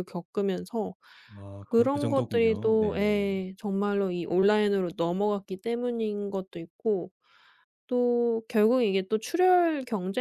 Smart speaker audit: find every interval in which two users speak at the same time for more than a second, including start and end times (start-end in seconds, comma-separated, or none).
1.6-3.3